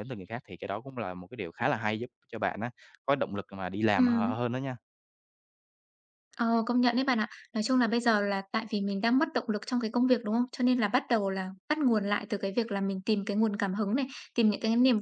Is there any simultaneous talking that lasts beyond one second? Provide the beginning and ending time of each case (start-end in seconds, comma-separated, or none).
none